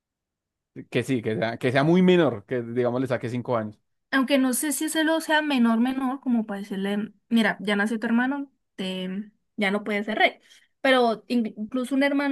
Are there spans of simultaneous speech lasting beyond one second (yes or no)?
no